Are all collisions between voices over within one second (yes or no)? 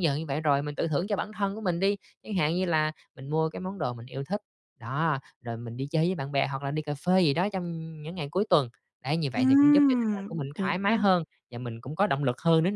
no